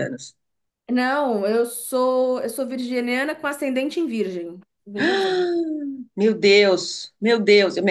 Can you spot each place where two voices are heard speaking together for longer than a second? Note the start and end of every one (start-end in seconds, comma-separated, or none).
none